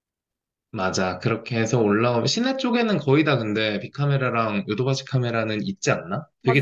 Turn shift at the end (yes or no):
yes